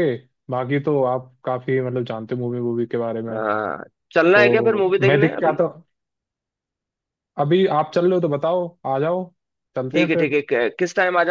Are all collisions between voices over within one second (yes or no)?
no